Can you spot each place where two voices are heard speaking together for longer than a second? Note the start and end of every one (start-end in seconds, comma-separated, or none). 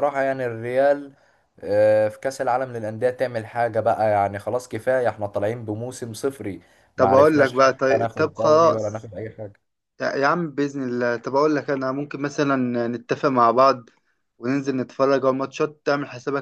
7.0-9.1